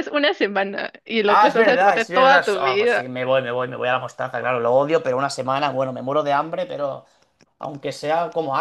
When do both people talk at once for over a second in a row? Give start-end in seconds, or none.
1.2-3.0